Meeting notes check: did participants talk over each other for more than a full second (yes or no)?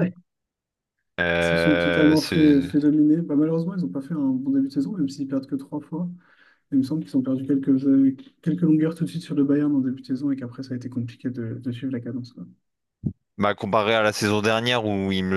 yes